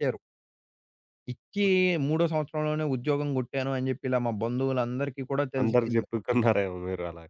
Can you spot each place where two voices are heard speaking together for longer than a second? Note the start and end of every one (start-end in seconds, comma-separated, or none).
none